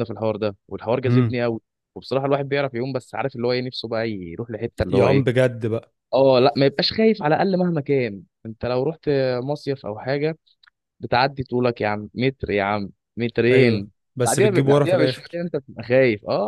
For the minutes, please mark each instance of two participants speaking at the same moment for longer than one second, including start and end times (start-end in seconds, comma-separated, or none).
13.5-15.4